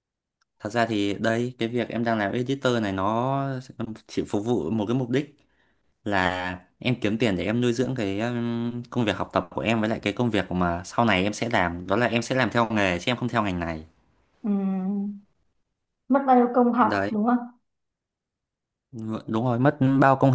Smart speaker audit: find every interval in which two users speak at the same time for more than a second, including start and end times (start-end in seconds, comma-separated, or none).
none